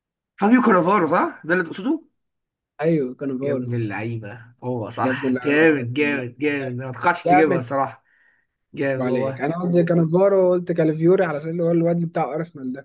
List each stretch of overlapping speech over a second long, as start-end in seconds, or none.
5.0-6.2